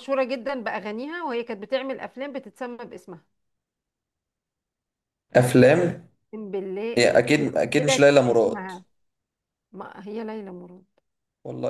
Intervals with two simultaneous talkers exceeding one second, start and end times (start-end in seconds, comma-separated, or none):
7.0-8.7